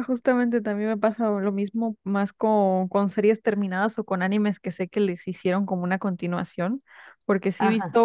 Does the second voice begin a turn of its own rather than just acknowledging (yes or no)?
no